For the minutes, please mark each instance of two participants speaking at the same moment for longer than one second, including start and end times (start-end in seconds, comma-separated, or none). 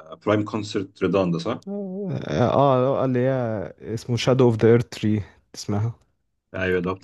none